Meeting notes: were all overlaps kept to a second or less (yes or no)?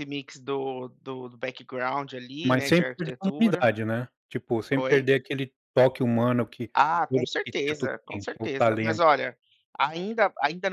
no